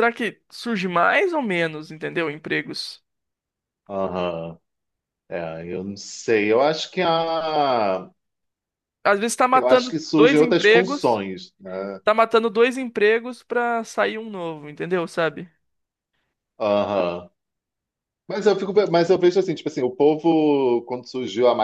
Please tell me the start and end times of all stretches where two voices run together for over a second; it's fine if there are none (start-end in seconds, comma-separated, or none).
9.5-11.2